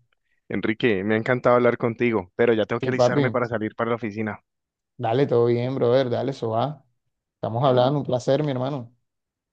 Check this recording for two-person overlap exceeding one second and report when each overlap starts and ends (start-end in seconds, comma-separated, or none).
none